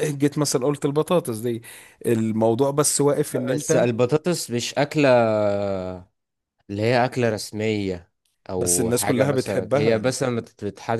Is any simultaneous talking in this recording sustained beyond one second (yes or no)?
yes